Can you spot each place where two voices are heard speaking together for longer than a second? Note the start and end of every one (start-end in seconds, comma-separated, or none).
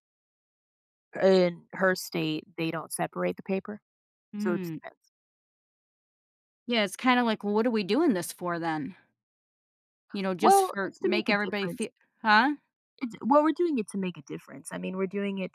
10.4-11.9